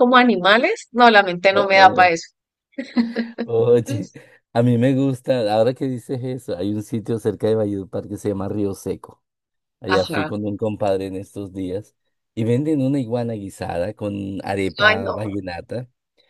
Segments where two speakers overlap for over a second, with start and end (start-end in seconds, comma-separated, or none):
none